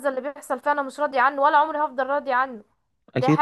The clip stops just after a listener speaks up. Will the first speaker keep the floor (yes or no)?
yes